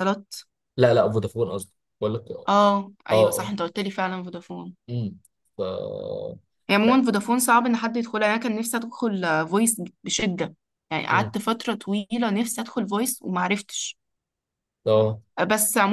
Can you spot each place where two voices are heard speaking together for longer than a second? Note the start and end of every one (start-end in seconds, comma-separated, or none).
none